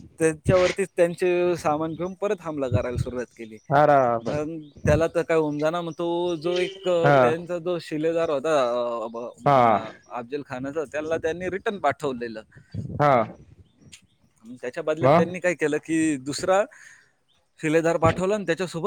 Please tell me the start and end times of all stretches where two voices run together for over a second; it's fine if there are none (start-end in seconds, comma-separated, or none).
none